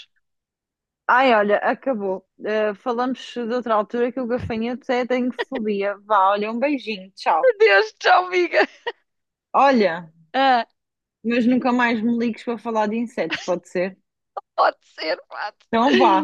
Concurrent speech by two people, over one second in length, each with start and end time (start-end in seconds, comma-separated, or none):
none